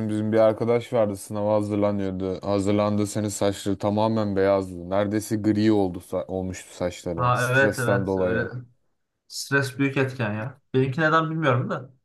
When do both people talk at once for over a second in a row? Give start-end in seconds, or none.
7.2-8.5